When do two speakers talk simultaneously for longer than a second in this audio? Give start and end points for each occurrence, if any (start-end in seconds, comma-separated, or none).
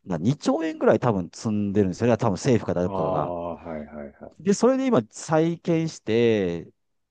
none